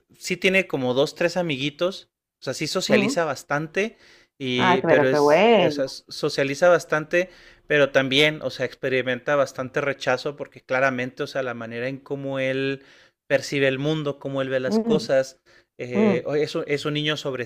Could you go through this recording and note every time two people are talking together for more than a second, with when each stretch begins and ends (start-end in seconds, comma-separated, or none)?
4.5-6.0